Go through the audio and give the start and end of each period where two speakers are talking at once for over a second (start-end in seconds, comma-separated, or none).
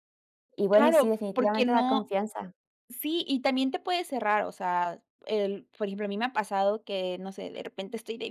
0.7-2.1